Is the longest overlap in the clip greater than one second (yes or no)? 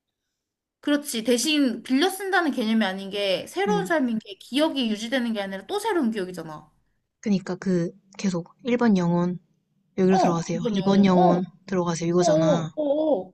yes